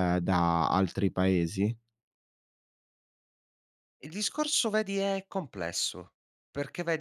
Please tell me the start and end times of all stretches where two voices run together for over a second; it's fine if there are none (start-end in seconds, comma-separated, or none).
none